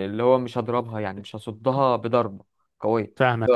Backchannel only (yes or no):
yes